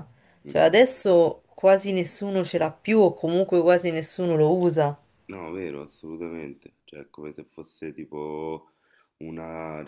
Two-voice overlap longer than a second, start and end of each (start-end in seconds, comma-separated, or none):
none